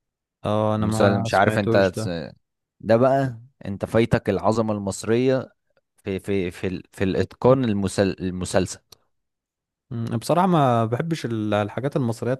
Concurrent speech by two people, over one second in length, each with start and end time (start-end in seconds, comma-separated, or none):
0.8-2.1